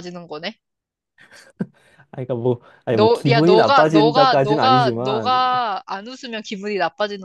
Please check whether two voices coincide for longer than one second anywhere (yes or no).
yes